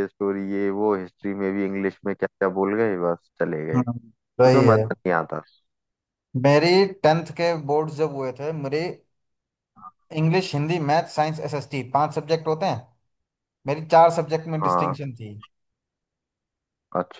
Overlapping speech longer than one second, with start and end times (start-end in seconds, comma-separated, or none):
none